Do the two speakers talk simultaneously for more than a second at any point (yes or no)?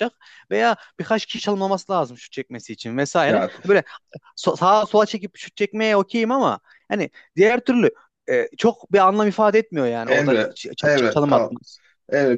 yes